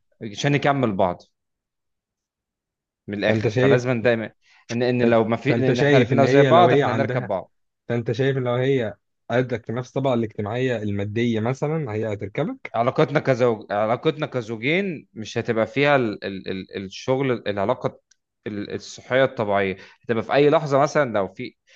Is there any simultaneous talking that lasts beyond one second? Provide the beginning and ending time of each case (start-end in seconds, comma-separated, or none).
5.0-7.3